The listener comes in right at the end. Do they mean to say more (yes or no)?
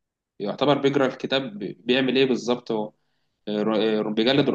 no